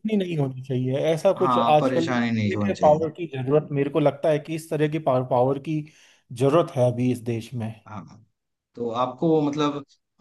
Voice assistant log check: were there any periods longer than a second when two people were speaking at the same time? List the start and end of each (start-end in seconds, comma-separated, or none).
1.4-3.0